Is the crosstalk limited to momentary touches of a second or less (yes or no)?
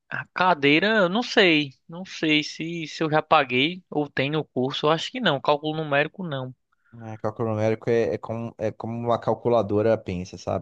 yes